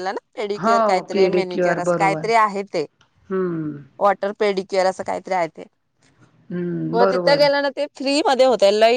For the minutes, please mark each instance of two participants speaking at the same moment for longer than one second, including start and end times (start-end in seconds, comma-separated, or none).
0.6-2.2